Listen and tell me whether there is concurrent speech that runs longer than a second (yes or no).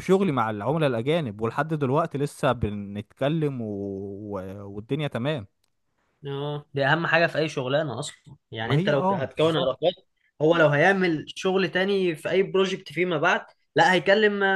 yes